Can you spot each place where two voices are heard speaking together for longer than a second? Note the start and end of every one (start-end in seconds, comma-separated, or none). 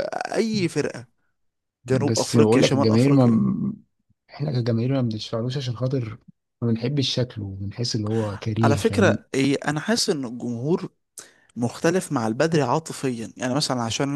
1.9-3.2